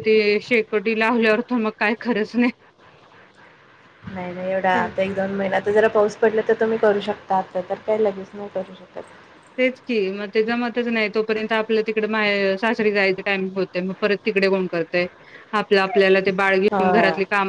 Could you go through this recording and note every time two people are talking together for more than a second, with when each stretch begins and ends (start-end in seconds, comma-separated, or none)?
none